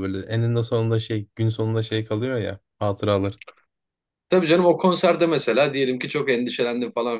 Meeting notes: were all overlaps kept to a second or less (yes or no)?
yes